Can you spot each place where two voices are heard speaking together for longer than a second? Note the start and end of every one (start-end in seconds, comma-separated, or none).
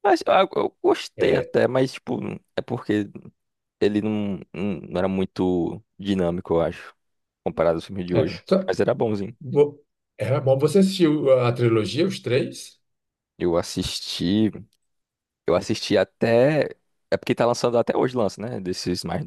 none